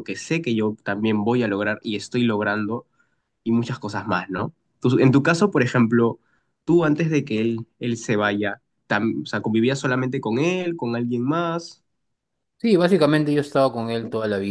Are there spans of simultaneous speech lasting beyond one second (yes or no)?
no